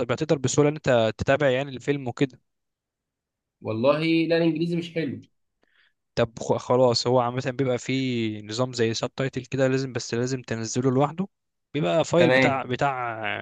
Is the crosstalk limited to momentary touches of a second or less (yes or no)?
yes